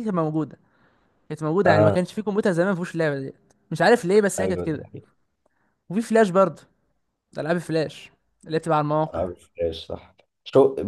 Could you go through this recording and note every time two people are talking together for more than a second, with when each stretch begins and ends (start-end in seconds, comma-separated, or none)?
none